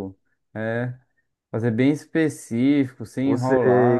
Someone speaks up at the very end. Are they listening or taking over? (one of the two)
taking over